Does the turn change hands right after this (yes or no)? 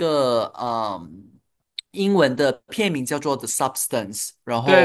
yes